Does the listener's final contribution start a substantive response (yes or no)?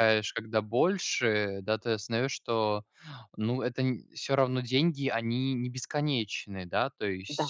yes